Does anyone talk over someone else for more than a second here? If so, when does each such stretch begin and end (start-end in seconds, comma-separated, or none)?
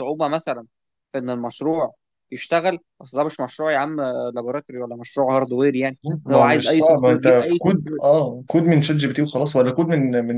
6.3-8.0